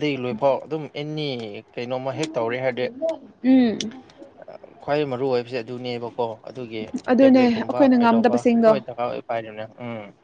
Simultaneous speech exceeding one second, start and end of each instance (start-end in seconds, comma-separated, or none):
7.2-8.7